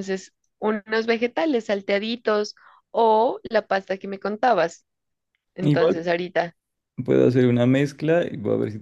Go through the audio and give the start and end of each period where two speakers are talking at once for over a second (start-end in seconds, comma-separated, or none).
none